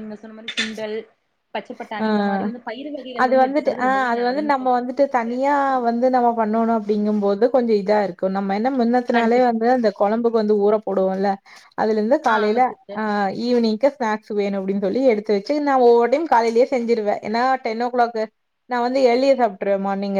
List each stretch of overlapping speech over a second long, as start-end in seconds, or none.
3.2-5.4